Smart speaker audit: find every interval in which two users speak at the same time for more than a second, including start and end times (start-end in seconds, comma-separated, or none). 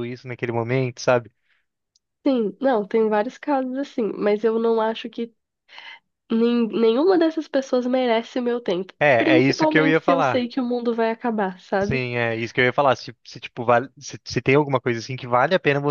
9.0-10.5